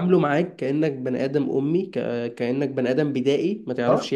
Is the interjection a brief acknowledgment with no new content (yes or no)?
yes